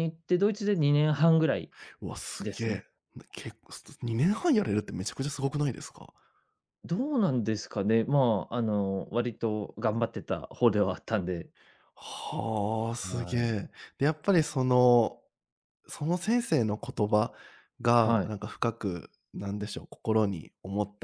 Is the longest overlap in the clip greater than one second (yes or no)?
no